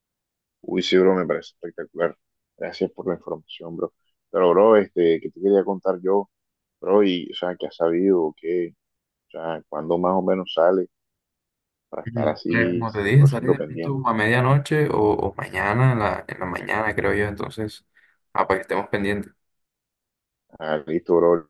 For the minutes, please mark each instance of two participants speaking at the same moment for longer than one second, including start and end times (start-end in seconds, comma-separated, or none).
12.0-14.0